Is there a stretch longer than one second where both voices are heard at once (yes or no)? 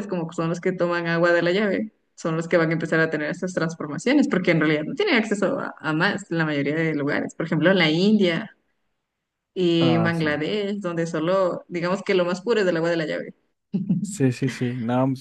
no